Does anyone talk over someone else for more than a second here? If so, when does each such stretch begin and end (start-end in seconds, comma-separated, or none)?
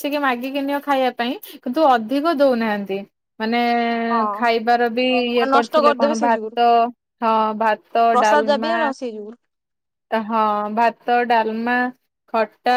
4.1-6.6